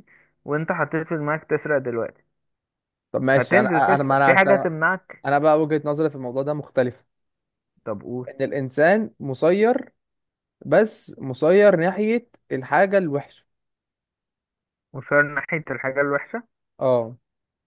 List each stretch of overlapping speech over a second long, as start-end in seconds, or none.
3.4-4.7